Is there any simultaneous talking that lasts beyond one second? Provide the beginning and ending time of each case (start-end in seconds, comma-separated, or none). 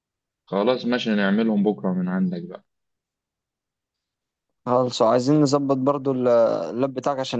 none